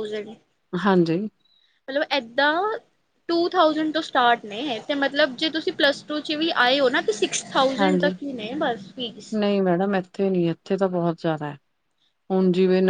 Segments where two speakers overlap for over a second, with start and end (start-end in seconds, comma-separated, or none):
none